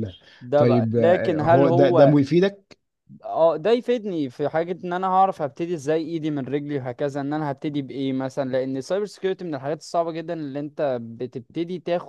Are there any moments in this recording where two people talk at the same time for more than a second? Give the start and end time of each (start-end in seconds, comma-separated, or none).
0.6-2.2